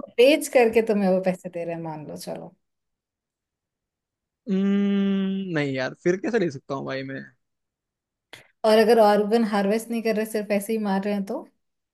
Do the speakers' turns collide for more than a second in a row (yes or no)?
no